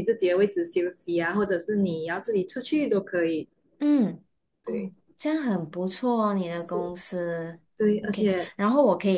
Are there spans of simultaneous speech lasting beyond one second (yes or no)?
no